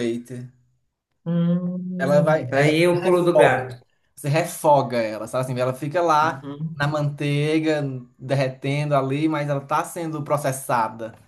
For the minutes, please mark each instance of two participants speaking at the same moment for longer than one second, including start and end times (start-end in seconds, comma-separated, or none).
2.0-3.6